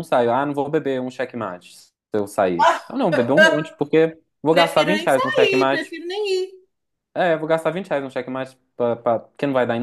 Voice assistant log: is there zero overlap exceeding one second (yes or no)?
no